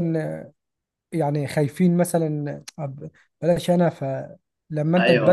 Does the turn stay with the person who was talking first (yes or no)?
yes